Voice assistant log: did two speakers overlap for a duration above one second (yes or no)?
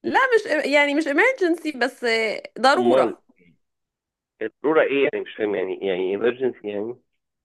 no